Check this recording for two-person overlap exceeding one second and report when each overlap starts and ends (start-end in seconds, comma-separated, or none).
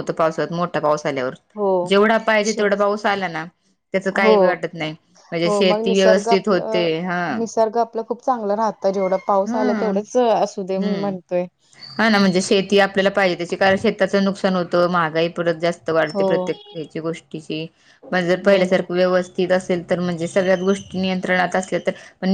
5.5-6.9